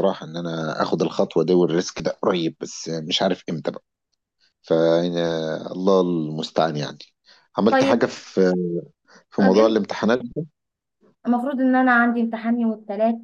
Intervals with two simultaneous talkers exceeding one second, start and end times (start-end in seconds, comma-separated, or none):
none